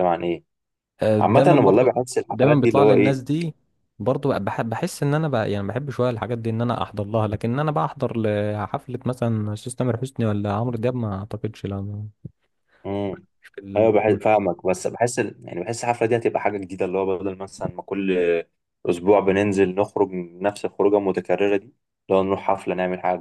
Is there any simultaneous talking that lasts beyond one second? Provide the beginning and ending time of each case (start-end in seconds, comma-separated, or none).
1.2-3.2